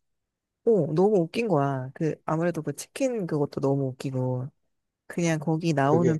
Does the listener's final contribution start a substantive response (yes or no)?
no